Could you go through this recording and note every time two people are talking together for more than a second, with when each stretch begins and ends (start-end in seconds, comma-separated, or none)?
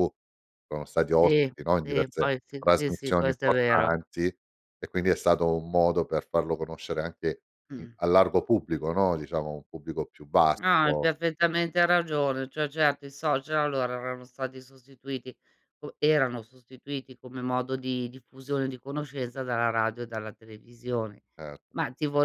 1.2-3.9